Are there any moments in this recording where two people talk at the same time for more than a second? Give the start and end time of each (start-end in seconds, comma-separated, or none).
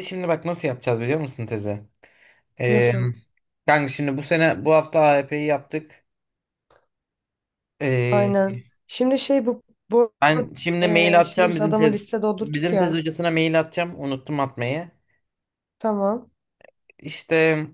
10.8-13.0